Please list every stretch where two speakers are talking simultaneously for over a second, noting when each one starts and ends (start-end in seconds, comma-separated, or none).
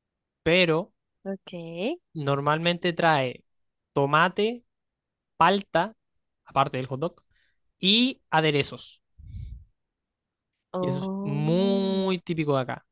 10.8-12.1